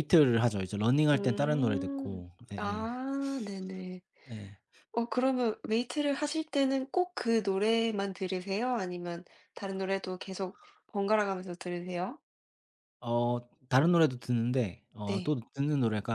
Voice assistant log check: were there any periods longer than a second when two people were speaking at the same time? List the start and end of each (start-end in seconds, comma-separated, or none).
1.1-2.9